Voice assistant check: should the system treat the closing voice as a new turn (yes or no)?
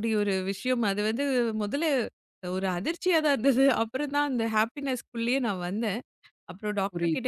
no